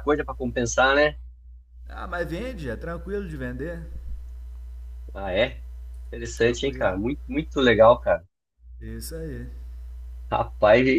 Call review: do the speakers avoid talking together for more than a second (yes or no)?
yes